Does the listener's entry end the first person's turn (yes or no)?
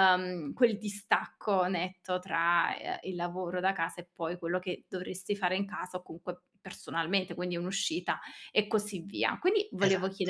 no